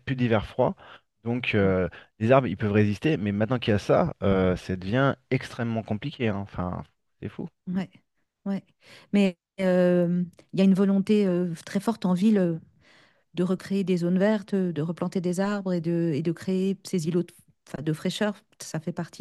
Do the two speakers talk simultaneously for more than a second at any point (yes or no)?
no